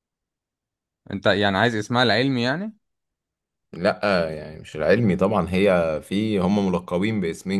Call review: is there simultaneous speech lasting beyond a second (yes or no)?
no